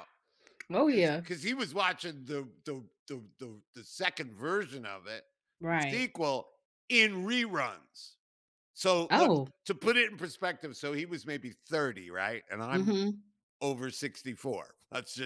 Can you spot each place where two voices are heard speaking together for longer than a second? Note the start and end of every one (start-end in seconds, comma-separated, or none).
none